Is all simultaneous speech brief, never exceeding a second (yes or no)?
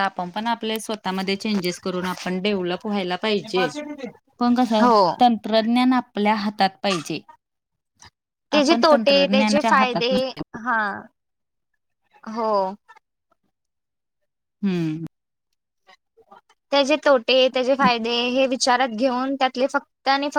no